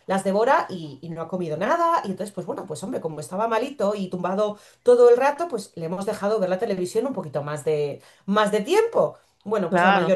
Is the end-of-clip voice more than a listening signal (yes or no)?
no